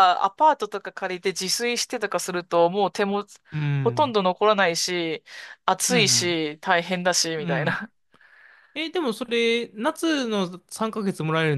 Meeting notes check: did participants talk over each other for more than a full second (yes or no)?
no